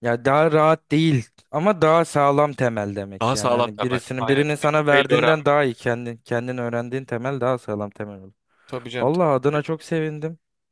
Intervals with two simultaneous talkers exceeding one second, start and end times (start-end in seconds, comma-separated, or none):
3.2-5.5